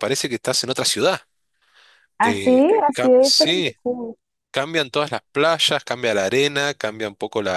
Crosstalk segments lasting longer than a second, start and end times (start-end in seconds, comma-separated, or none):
2.2-3.7